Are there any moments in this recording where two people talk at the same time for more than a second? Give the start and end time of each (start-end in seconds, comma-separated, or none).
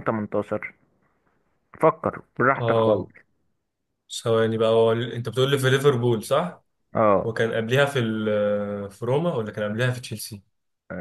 none